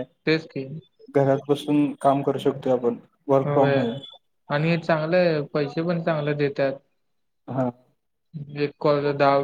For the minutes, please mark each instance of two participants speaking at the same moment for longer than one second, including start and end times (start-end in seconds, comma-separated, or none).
none